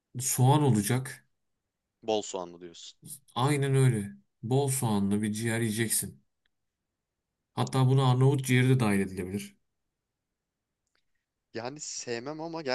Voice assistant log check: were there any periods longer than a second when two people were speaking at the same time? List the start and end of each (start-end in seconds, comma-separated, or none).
none